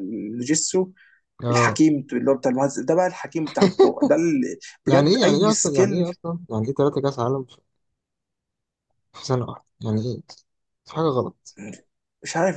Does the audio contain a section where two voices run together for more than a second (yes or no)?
yes